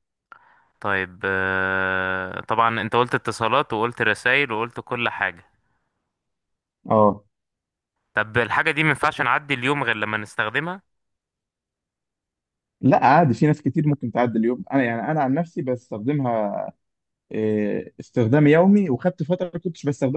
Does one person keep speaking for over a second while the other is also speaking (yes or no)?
no